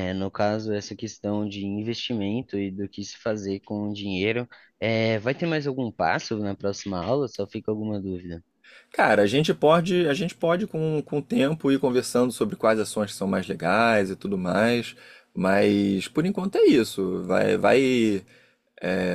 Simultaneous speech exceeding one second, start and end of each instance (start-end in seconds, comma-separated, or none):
none